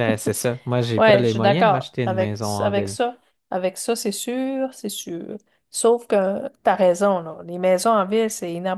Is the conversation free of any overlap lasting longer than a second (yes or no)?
no